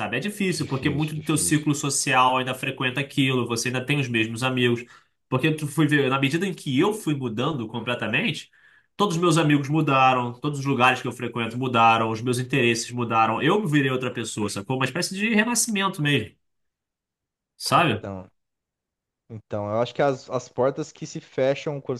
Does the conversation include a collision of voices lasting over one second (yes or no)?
yes